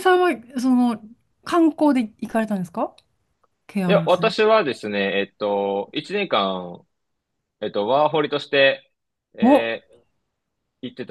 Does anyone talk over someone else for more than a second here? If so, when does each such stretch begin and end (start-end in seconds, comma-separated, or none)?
none